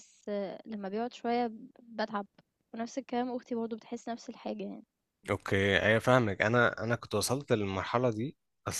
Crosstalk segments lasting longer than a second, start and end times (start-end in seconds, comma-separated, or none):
none